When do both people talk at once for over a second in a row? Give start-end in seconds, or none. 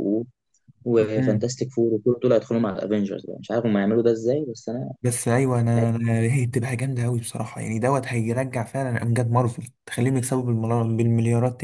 none